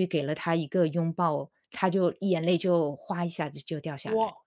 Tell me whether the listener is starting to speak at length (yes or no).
yes